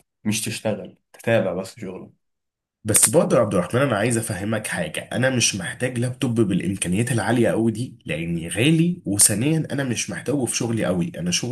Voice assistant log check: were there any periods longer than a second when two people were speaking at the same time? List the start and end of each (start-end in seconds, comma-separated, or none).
none